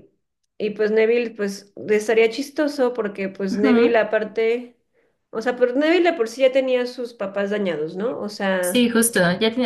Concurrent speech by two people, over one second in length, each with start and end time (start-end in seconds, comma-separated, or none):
none